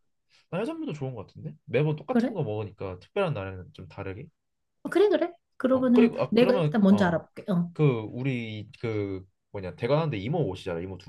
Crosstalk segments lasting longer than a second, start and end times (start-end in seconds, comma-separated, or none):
5.7-7.2